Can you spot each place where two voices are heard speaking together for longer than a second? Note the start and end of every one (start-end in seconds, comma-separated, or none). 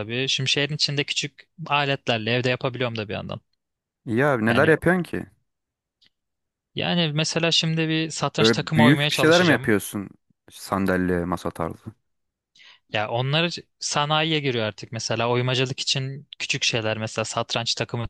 8.4-9.7